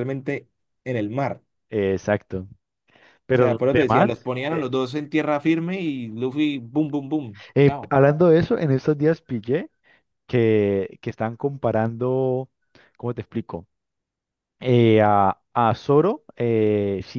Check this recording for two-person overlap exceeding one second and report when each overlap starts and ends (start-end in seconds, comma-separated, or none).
3.3-4.7